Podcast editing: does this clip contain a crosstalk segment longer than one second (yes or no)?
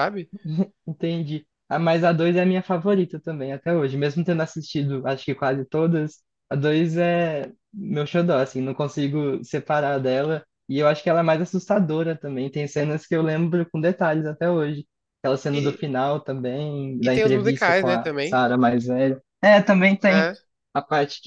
yes